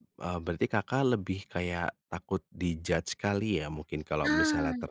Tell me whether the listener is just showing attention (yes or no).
yes